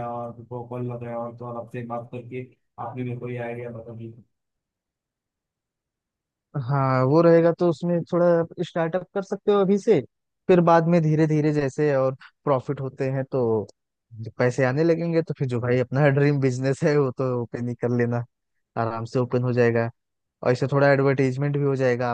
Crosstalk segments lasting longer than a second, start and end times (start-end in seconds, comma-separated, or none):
none